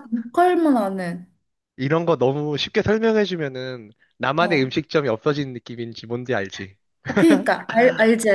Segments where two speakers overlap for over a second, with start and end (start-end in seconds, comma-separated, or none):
none